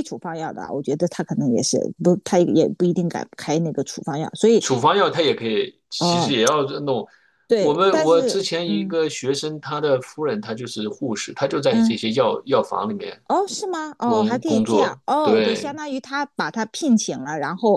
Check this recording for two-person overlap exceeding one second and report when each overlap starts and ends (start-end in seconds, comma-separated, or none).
7.6-8.9, 14.0-15.8